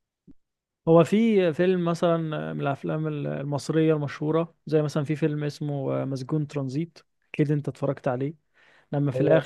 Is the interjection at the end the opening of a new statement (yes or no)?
no